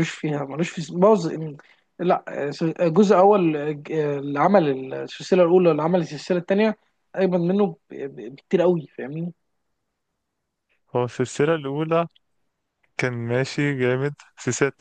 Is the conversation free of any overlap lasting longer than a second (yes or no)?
yes